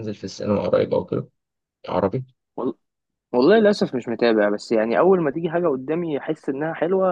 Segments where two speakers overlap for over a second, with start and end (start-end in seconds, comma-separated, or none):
none